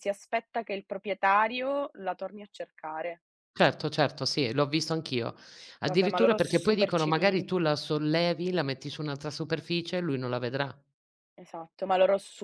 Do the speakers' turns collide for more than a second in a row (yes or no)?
yes